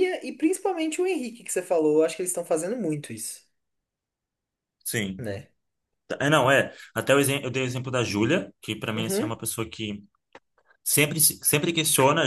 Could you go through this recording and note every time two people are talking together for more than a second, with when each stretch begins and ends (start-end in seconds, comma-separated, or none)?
none